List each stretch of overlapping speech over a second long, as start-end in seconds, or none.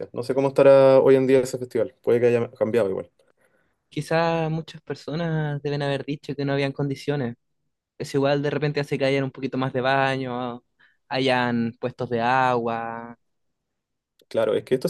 none